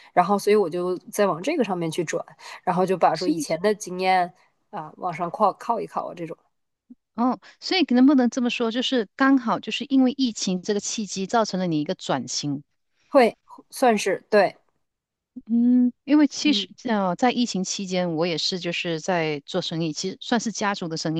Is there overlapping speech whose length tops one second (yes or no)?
no